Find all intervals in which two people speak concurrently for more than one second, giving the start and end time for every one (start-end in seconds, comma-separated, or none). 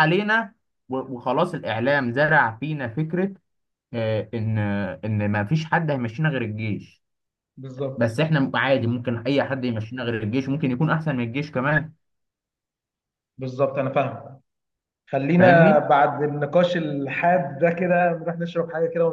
none